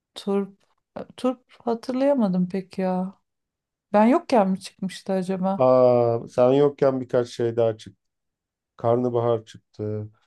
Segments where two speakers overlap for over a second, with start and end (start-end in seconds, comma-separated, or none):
none